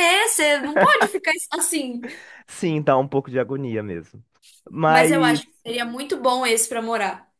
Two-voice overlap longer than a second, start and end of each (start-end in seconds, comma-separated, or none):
none